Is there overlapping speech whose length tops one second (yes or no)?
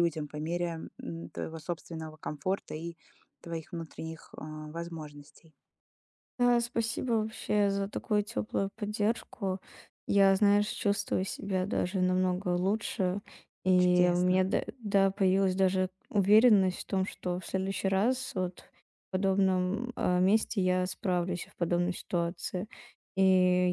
no